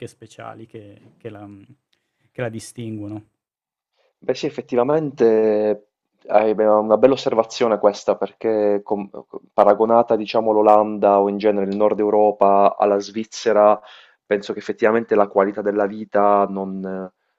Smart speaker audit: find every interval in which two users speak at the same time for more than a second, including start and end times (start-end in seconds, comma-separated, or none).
none